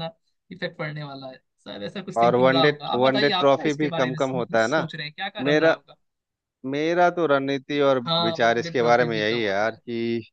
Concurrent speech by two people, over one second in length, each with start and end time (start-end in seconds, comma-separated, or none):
2.2-4.8, 8.1-9.8